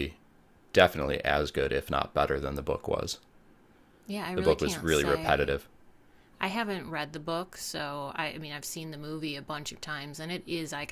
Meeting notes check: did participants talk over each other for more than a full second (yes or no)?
yes